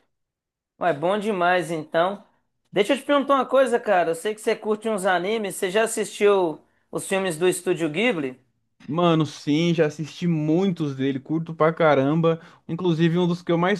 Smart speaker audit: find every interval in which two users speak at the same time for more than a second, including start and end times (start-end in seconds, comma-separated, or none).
none